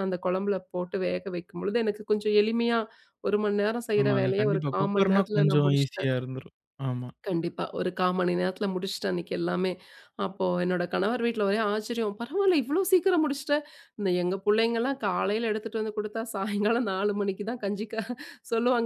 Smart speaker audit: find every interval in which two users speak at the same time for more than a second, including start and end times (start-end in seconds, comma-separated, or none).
4.0-6.1